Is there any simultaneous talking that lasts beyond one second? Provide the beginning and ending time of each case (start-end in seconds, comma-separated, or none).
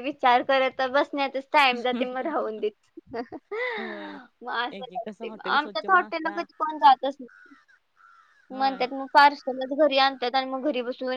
4.7-6.5